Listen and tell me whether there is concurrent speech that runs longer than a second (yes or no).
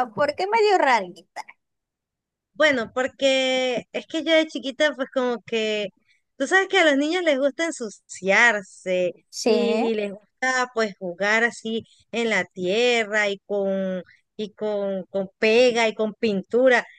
no